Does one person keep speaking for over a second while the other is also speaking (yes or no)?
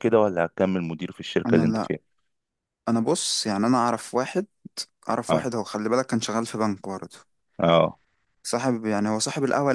no